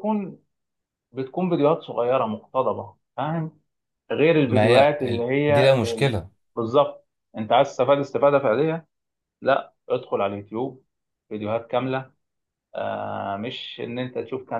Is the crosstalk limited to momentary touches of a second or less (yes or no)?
no